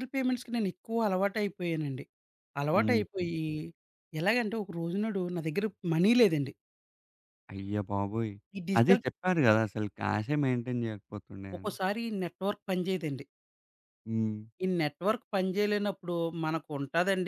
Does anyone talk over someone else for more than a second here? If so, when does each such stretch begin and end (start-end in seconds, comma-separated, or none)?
none